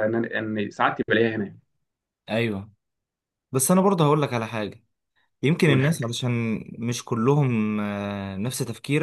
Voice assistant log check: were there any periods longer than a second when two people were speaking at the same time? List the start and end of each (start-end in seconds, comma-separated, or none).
none